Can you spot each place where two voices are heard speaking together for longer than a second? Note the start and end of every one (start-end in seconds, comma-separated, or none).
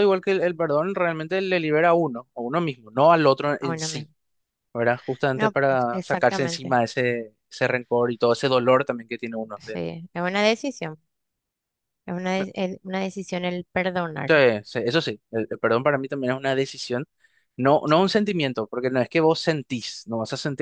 5.3-6.8